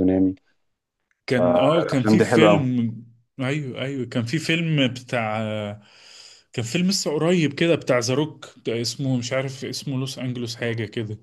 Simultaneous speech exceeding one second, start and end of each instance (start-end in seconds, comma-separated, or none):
1.4-2.7